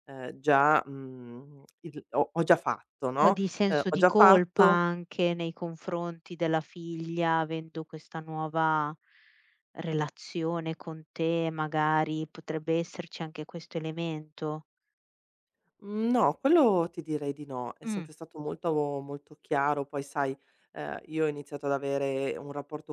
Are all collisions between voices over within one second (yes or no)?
no